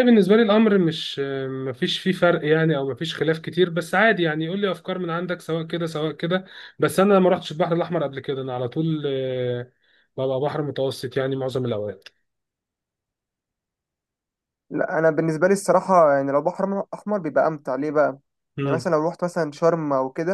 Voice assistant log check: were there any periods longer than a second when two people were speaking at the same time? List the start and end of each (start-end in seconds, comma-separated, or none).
none